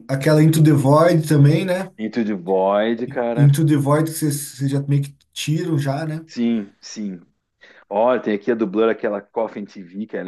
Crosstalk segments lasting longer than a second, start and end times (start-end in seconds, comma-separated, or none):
none